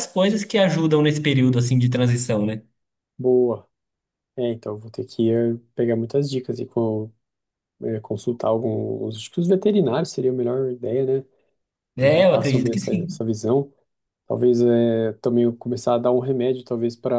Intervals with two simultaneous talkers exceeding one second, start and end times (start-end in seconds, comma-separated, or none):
12.0-13.2